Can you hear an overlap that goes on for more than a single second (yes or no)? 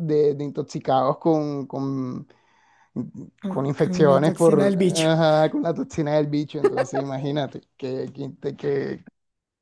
yes